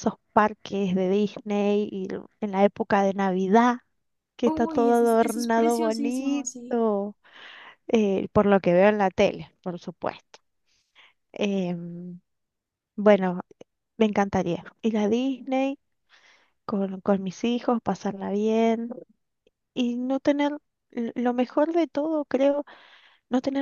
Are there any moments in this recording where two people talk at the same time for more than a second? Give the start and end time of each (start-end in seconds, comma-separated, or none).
4.4-6.8